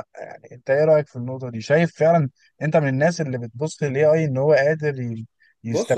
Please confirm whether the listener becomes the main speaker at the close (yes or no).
yes